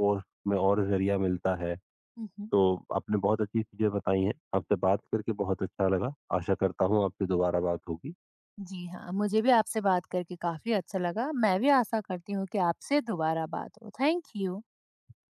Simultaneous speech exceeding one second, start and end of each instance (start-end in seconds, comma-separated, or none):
none